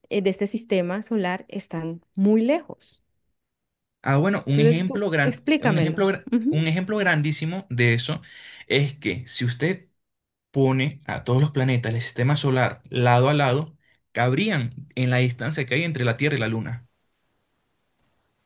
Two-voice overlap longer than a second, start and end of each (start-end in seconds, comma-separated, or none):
4.5-6.7